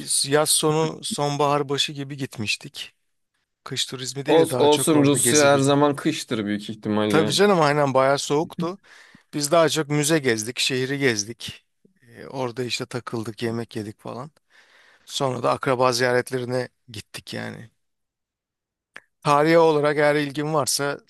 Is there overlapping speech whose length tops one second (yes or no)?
yes